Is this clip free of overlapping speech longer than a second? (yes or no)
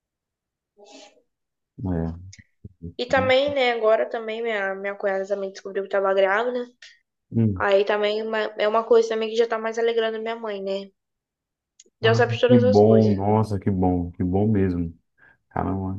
no